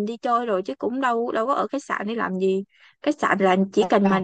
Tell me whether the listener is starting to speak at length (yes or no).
no